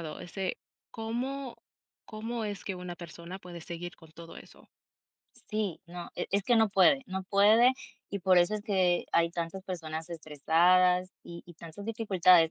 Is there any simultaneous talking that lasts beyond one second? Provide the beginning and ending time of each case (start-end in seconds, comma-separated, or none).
none